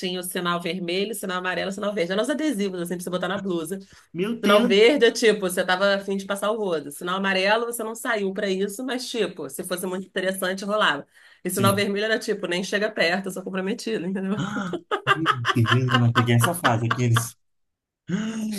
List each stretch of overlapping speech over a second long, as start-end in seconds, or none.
none